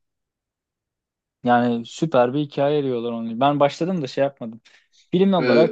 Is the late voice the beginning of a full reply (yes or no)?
yes